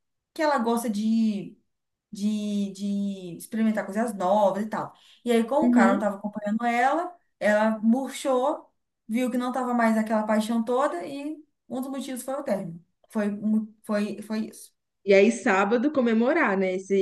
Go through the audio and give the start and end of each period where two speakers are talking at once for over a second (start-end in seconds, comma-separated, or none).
none